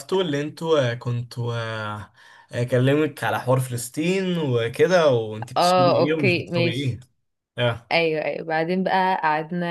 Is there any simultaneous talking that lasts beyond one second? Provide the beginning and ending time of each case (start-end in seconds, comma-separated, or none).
5.6-7.0